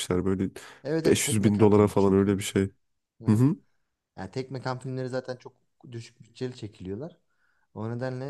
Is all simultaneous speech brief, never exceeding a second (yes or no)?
no